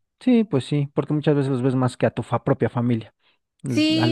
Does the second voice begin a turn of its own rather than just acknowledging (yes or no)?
yes